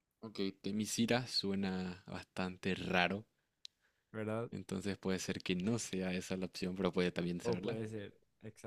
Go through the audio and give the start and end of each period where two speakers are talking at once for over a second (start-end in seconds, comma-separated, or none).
none